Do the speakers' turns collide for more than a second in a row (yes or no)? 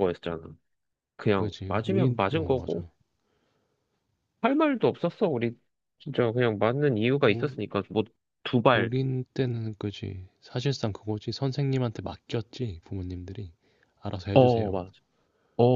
yes